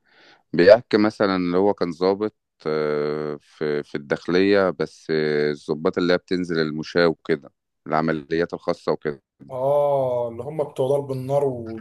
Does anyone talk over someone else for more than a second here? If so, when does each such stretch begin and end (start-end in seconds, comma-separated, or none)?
none